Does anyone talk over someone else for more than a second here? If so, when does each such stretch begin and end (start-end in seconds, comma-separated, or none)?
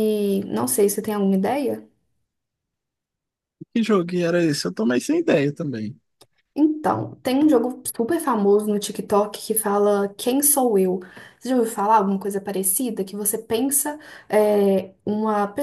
none